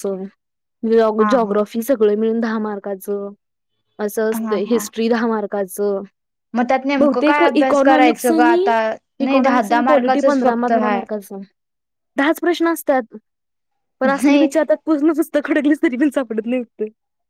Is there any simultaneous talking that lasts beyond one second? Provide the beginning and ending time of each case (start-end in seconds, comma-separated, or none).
7.0-8.6, 9.3-11.0